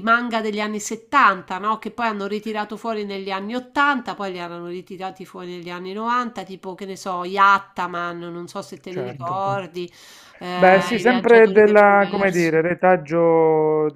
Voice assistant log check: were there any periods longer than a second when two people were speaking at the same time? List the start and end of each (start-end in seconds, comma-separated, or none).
10.5-12.6